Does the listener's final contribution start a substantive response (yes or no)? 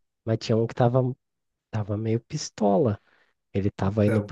no